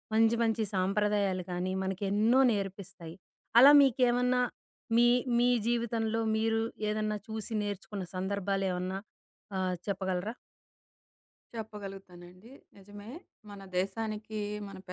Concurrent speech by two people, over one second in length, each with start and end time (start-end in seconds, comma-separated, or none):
none